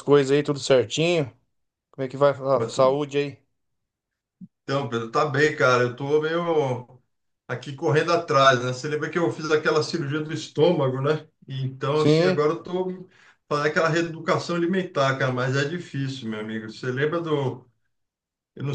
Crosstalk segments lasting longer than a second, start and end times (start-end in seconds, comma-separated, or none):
none